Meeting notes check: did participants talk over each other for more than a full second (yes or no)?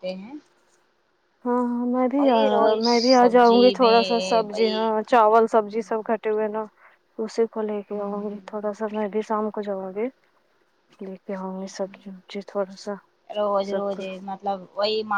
yes